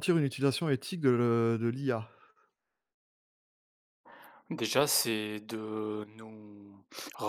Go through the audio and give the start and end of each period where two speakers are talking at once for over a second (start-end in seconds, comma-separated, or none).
none